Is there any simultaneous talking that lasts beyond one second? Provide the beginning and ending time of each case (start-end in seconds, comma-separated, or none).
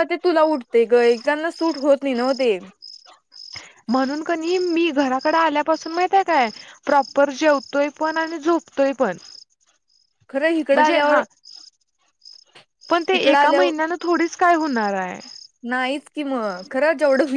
none